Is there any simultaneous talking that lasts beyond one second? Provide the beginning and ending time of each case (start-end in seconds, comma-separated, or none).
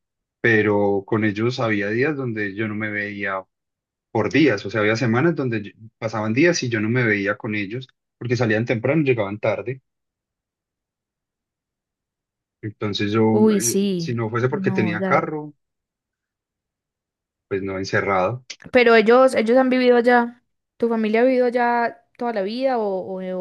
13.6-15.2